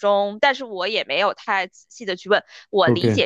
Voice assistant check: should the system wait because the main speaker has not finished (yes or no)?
yes